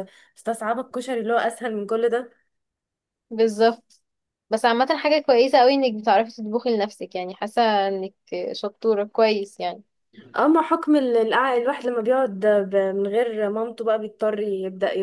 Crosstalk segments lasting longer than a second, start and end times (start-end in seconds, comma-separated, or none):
none